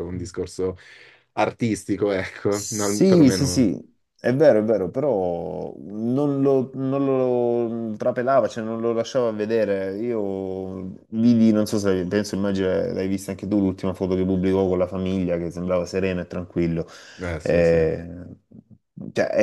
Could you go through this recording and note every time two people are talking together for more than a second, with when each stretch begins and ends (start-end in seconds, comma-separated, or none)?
2.5-3.7